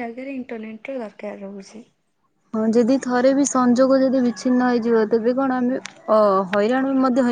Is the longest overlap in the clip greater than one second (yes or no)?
no